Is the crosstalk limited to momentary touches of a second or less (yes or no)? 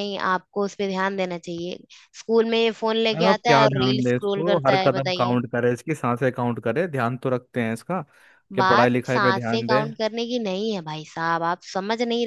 no